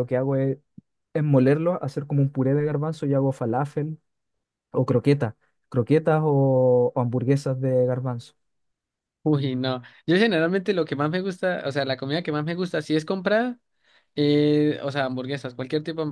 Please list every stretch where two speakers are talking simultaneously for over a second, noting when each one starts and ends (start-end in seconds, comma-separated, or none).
none